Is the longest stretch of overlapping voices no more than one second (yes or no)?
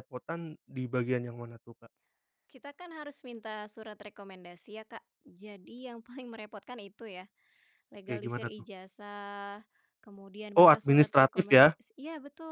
no